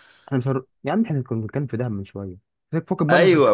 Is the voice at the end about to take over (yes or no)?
yes